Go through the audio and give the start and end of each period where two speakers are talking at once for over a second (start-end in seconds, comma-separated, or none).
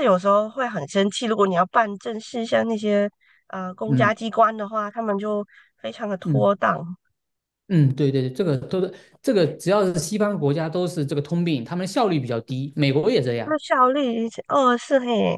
none